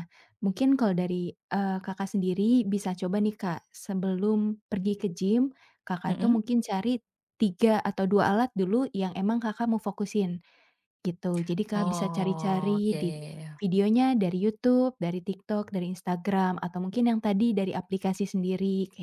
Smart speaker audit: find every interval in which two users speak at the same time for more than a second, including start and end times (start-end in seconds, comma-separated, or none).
11.8-13.1